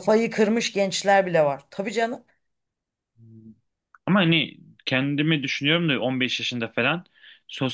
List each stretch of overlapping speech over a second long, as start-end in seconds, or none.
none